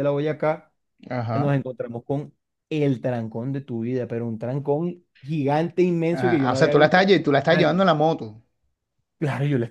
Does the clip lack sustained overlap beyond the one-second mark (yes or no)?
no